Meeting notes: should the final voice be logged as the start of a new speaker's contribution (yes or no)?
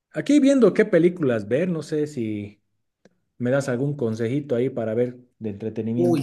yes